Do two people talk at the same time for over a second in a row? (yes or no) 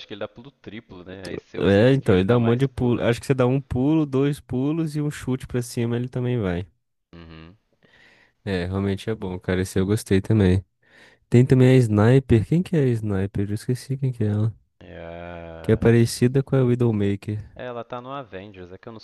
yes